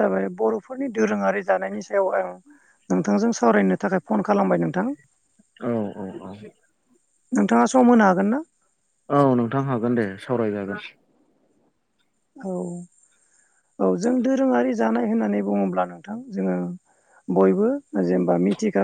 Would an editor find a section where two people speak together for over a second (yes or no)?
no